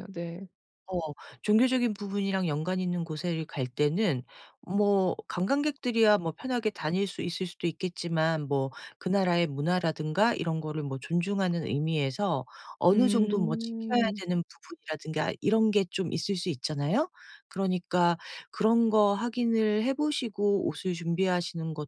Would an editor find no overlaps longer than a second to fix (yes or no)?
no